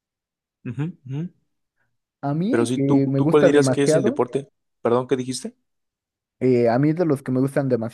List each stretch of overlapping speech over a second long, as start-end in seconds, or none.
2.5-4.2